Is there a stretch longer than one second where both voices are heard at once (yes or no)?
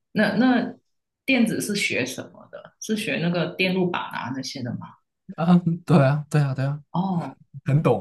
no